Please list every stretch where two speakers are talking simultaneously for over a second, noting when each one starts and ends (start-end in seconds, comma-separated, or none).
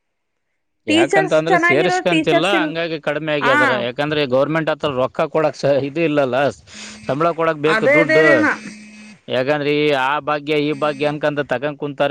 1.0-2.7